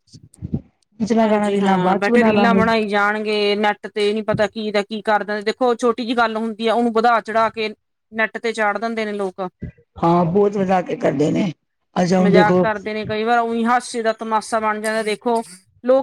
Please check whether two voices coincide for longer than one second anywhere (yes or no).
yes